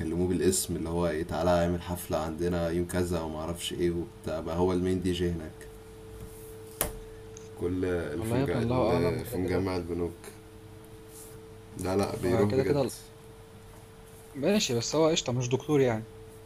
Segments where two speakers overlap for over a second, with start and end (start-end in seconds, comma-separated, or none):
8.2-9.7